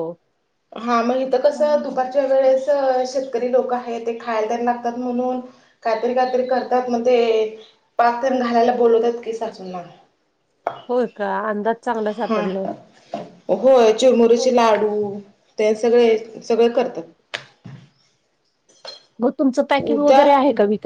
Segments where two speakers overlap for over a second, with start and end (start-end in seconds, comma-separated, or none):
none